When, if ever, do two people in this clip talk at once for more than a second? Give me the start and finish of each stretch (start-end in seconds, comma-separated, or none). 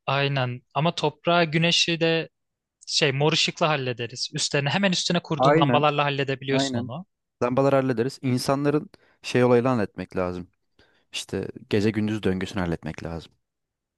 none